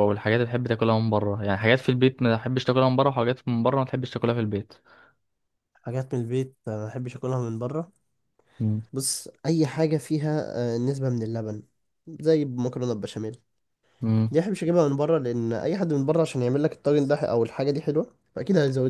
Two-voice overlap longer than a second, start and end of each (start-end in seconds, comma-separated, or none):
none